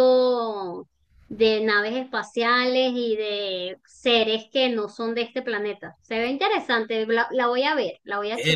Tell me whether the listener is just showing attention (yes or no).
no